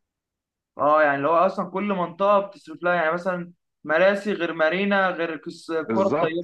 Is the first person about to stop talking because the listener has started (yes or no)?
yes